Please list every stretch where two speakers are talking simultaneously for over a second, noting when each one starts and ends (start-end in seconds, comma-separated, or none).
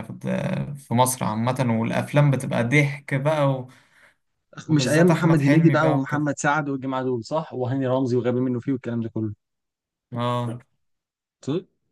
4.7-6.3